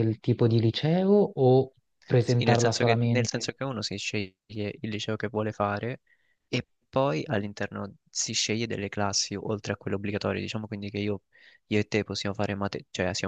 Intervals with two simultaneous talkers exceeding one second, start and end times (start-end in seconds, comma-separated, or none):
2.2-3.5